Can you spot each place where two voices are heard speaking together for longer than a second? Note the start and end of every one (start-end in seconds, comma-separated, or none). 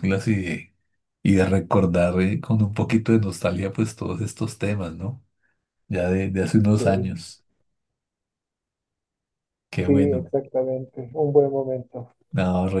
none